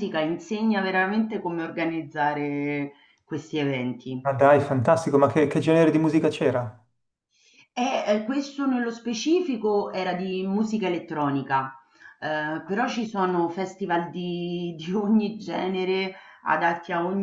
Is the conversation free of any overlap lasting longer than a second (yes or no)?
yes